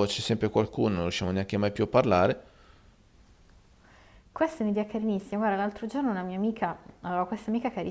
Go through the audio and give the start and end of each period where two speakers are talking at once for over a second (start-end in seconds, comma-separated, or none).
none